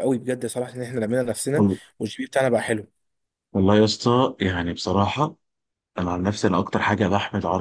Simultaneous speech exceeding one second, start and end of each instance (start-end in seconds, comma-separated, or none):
none